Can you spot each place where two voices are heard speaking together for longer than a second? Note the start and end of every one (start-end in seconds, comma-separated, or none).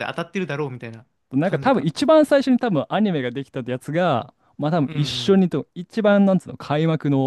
none